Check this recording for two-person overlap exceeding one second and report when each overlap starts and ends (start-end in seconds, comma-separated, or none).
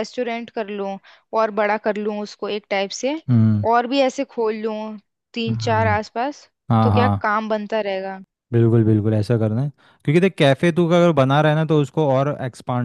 none